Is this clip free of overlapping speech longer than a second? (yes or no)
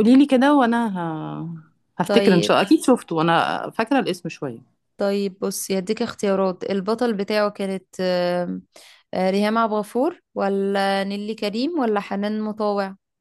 yes